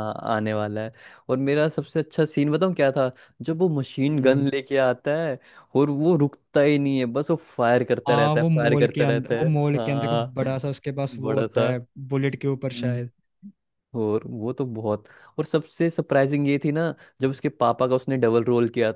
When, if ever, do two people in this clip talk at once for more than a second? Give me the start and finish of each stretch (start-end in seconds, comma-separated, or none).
8.1-10.3